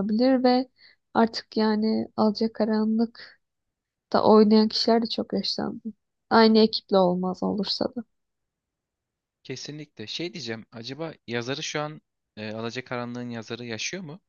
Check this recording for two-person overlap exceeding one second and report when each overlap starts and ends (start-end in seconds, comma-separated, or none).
none